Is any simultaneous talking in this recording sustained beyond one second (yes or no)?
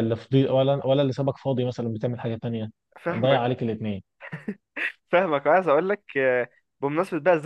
no